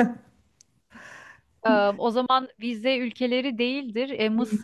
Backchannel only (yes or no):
yes